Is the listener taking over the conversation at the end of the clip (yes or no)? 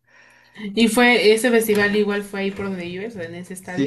yes